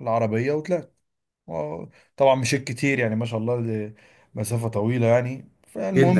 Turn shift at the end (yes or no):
yes